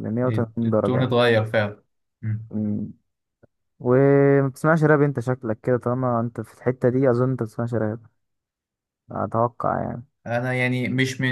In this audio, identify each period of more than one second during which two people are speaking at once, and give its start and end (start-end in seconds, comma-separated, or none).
none